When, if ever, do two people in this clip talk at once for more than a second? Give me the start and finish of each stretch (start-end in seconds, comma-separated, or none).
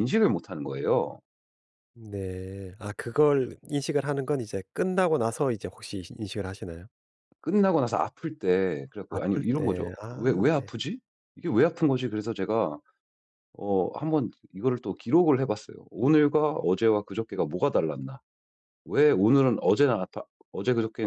9.1-10.7